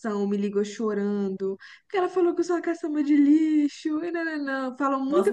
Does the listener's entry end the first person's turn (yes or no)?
yes